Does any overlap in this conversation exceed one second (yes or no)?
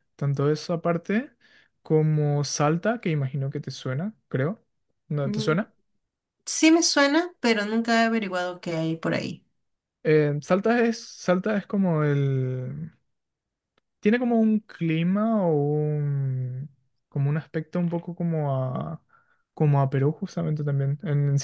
no